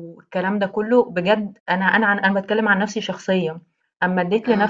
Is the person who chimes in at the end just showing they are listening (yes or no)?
yes